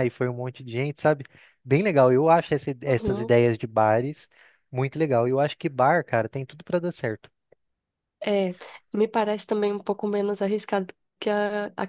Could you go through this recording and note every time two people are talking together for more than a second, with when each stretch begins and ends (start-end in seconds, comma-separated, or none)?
none